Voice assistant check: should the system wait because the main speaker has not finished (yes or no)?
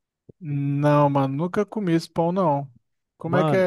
no